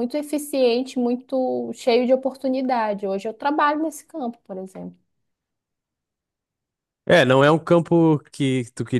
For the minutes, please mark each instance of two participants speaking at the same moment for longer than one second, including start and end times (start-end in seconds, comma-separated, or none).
none